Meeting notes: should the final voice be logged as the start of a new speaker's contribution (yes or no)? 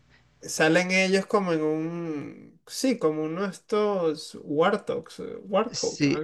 yes